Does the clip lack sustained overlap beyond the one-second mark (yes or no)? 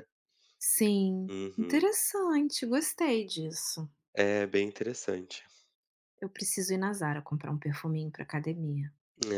yes